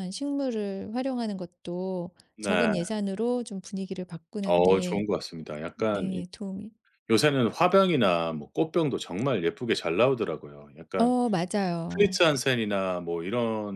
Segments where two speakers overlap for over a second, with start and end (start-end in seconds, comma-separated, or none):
none